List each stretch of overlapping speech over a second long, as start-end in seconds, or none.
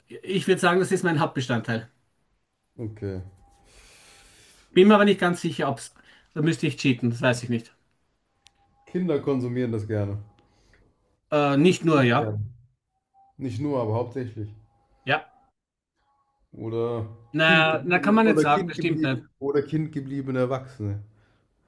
17.3-19.2